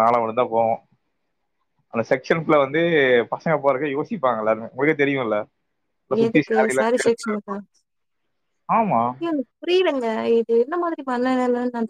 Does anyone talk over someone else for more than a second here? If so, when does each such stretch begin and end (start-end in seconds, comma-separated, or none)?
none